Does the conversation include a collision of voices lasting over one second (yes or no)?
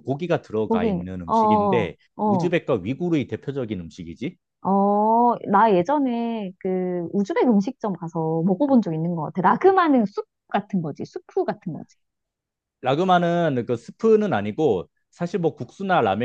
yes